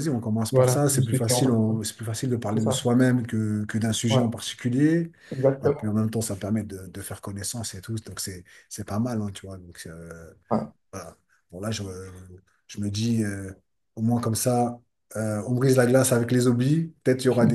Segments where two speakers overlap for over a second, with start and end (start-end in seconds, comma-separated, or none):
0.5-1.8